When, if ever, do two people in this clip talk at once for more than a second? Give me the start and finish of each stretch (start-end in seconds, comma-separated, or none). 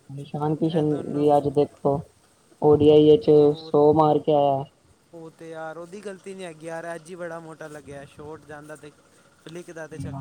none